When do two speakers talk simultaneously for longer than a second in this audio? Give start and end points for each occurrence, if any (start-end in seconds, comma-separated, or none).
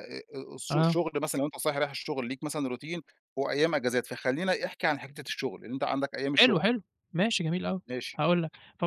none